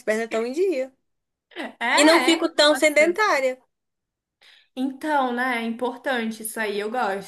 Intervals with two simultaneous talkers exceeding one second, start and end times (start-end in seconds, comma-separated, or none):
1.9-3.2